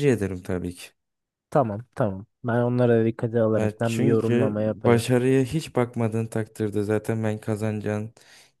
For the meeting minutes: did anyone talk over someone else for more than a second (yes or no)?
yes